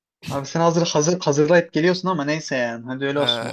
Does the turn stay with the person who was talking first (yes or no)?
no